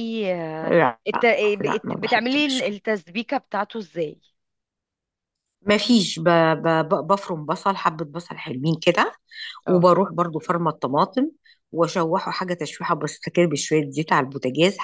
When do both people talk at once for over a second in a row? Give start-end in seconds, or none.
0.7-2.6